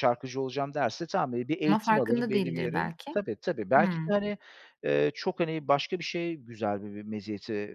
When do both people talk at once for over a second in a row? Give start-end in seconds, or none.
1.7-3.2